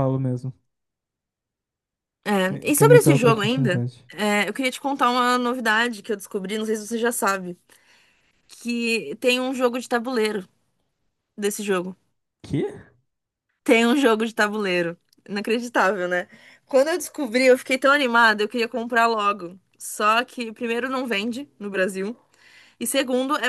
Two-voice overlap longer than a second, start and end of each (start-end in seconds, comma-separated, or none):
2.4-4.1